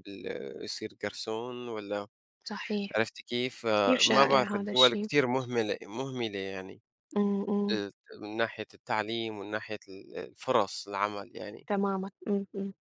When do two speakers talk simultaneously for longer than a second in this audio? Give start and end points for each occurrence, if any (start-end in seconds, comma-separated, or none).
3.8-5.1